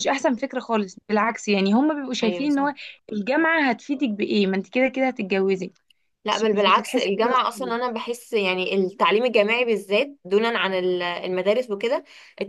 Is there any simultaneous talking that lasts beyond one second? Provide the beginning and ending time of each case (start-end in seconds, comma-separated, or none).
6.2-7.8